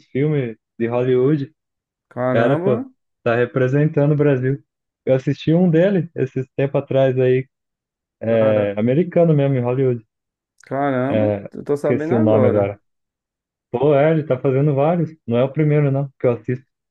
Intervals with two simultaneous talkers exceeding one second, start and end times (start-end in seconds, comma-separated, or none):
11.1-12.8